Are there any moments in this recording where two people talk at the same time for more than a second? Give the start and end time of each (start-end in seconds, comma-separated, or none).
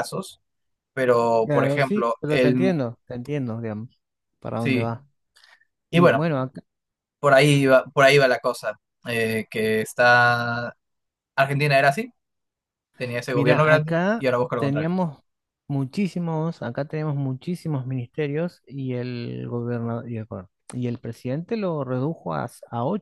1.4-2.8, 13.3-14.9